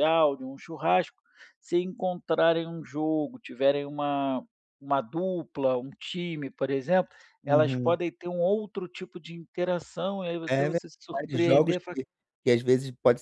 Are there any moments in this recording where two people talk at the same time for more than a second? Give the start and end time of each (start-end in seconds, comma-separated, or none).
10.5-12.0